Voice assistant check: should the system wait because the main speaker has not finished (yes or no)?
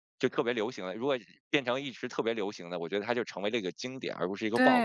no